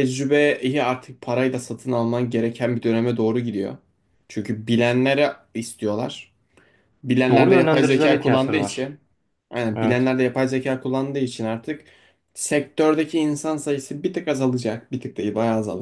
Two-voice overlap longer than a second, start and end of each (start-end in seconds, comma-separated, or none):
7.3-8.9